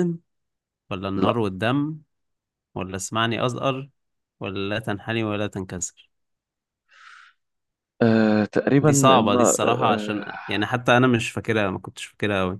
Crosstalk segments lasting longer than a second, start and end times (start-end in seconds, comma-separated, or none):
8.8-10.3